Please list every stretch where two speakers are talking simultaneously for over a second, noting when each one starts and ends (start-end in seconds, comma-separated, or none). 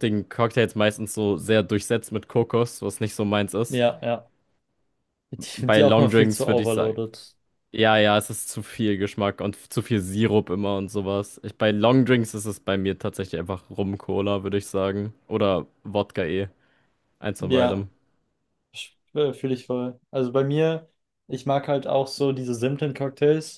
5.5-7.0